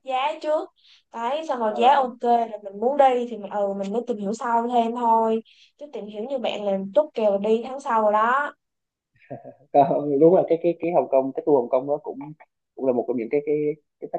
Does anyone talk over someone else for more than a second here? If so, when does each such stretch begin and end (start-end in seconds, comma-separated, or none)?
none